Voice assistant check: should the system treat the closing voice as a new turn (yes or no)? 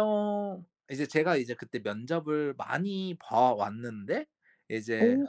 no